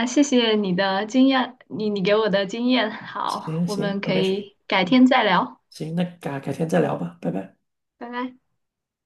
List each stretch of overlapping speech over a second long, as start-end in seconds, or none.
3.3-5.0